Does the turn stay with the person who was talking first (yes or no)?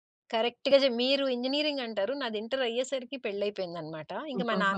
yes